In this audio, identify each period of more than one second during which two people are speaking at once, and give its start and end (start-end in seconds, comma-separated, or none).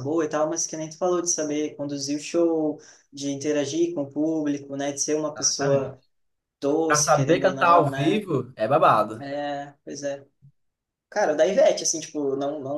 6.9-8.2